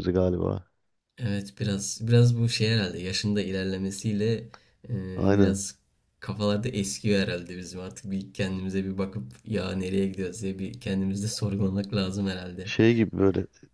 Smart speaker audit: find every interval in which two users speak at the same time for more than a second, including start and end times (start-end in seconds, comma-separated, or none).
none